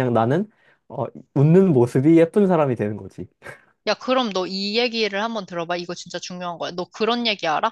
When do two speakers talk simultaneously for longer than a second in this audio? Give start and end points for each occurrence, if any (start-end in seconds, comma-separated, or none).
none